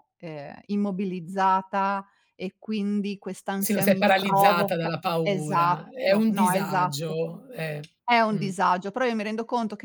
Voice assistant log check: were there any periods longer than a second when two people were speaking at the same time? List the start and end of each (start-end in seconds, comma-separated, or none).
3.5-7.2